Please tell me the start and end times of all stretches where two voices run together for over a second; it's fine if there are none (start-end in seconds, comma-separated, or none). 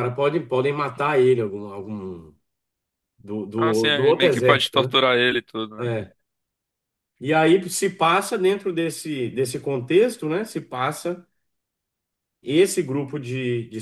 3.6-5.0